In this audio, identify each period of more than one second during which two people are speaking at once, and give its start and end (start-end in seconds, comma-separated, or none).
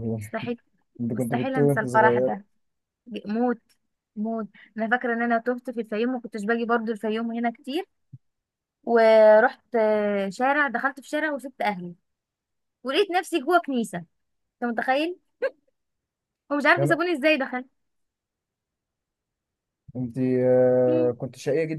1.1-2.3